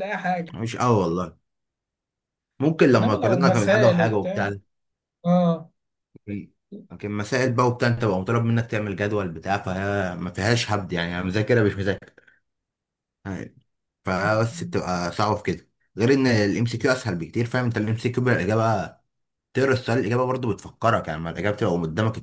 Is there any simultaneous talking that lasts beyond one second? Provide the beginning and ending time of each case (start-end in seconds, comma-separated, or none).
2.9-4.5